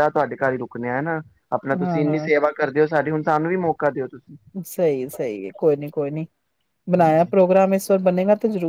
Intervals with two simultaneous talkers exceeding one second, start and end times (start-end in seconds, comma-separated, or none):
none